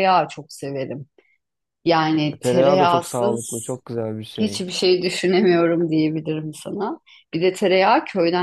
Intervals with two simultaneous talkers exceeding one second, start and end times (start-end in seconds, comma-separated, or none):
2.4-3.7